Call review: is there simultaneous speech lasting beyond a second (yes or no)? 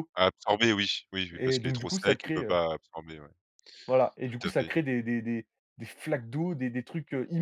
yes